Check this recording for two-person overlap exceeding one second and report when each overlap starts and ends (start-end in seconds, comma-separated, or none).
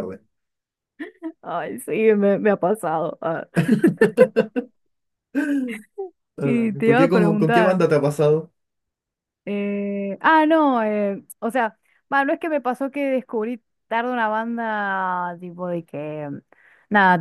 6.4-7.9